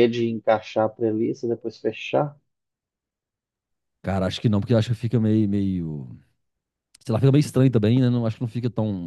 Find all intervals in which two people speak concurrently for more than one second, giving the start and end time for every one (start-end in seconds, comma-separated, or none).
none